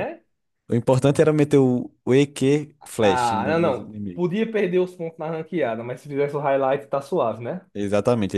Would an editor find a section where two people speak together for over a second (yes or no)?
yes